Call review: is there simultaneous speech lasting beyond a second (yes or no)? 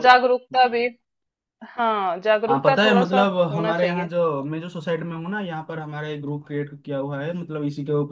yes